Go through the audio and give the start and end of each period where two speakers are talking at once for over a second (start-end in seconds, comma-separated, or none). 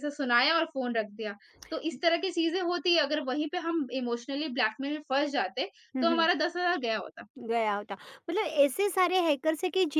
none